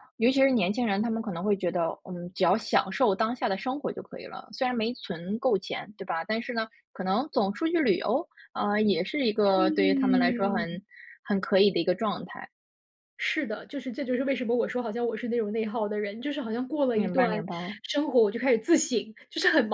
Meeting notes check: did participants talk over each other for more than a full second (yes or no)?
yes